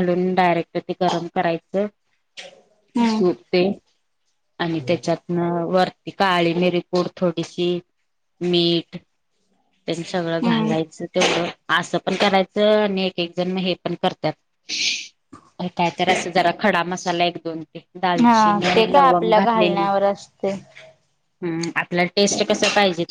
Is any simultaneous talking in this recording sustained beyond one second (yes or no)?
yes